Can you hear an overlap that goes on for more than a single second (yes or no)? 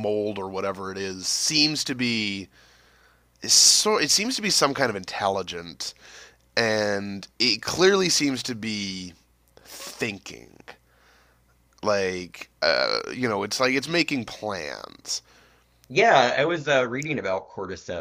no